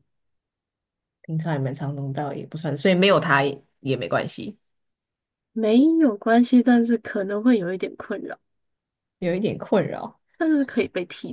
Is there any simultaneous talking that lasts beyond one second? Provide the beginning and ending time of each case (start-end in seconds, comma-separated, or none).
none